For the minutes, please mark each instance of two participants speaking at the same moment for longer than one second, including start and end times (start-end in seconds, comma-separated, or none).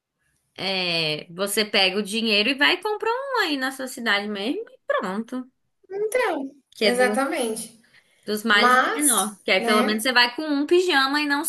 8.5-10.0